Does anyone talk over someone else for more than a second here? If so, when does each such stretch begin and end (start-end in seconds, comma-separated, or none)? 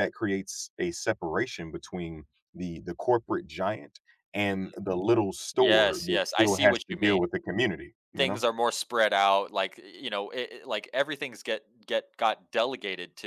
5.5-7.2